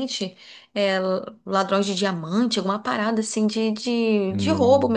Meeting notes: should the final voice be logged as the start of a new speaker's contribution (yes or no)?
no